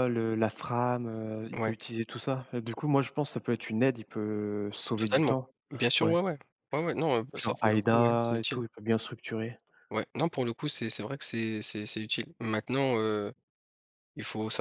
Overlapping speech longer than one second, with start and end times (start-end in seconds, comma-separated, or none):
7.3-8.6